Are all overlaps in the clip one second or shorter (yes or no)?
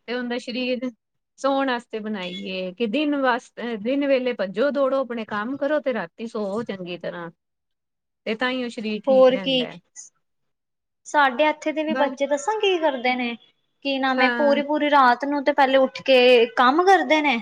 yes